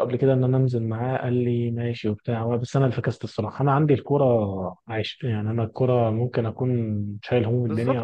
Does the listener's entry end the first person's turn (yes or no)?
no